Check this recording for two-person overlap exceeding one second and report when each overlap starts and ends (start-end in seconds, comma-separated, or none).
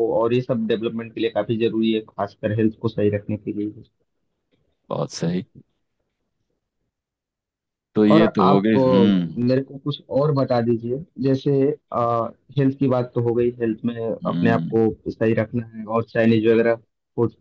8.2-9.4